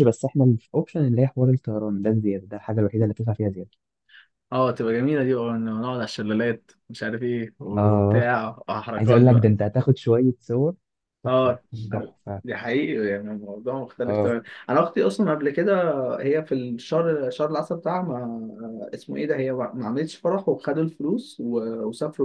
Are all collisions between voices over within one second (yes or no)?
yes